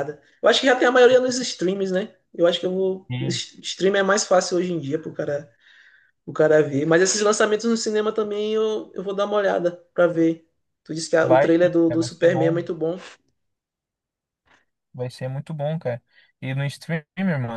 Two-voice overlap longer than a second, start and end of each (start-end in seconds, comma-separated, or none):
11.2-12.7